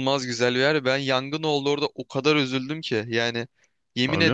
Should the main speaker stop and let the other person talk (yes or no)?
no